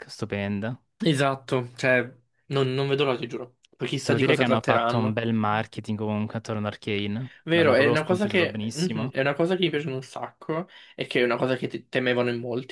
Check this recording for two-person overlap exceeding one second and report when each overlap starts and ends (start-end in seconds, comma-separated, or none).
4.0-5.2, 7.5-9.1